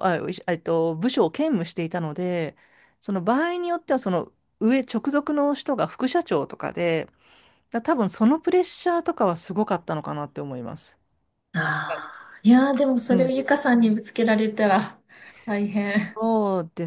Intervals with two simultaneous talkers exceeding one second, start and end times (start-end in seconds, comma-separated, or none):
none